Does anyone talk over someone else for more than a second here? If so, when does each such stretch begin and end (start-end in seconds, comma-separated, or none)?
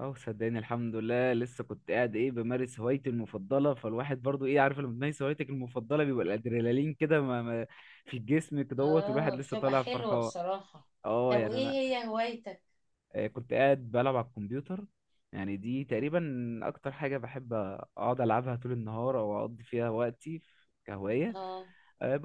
8.8-10.3